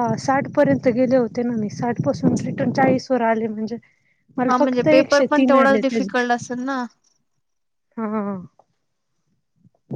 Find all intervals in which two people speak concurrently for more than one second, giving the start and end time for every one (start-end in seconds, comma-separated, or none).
4.5-6.6